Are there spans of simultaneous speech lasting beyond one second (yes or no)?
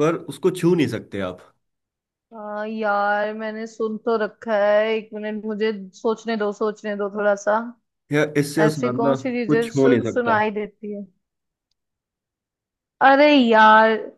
yes